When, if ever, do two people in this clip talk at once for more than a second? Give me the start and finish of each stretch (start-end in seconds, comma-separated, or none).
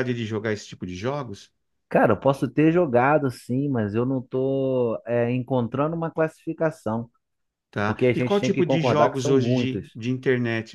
7.8-9.9